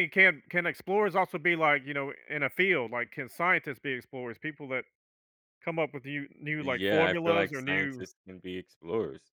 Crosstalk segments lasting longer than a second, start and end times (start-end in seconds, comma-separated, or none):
6.6-8.0